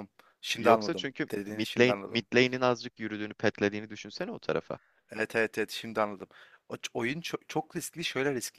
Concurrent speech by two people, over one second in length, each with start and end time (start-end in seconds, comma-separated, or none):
0.6-2.2